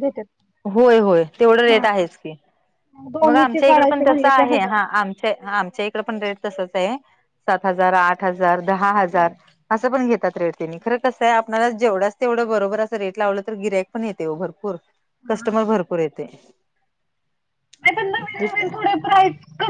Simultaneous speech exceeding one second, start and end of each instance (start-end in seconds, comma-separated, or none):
3.2-4.7